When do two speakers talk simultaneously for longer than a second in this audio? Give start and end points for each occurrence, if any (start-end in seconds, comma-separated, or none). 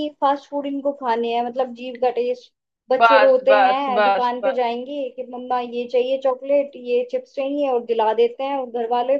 3.0-4.6